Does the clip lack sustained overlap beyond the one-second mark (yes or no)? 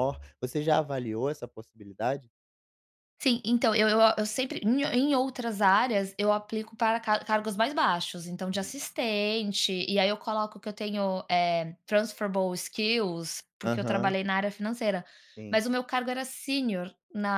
yes